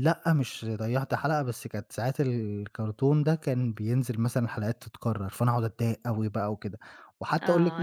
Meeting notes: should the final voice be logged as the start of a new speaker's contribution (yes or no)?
yes